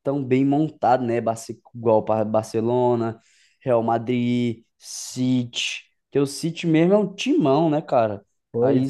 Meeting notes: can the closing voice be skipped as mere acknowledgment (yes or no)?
no